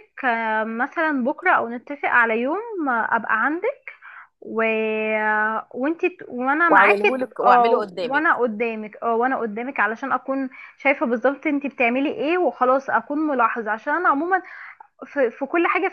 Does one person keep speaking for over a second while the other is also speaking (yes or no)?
yes